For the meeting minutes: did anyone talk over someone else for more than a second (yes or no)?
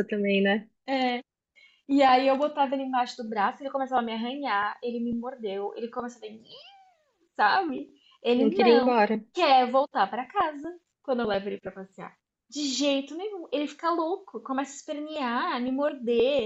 no